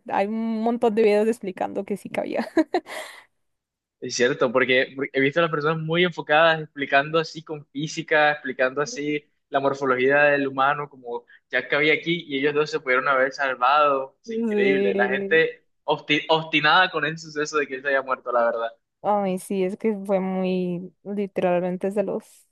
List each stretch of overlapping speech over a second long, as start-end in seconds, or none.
14.2-15.4